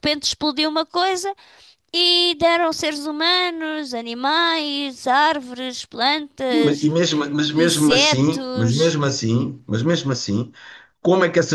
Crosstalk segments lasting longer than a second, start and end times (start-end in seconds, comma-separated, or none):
7.5-9.0